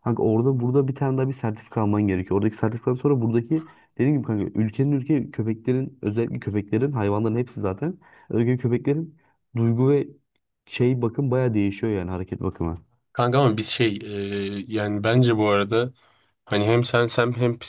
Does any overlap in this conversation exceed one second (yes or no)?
no